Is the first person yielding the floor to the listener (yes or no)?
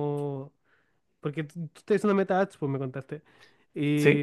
no